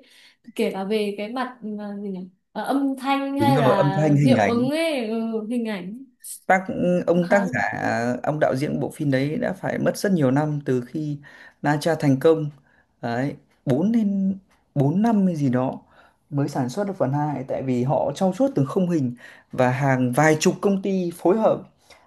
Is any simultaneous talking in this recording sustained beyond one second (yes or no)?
yes